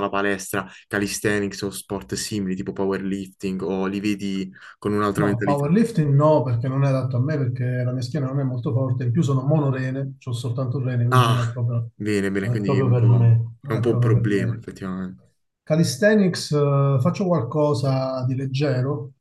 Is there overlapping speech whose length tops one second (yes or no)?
yes